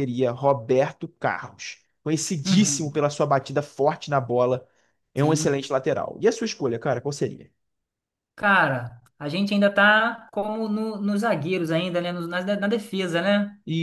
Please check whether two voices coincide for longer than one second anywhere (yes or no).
no